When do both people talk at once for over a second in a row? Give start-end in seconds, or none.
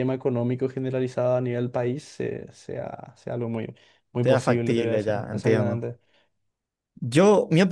4.2-5.9